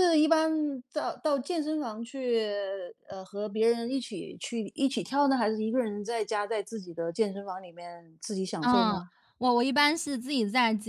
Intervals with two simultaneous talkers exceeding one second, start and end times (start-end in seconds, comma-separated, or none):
none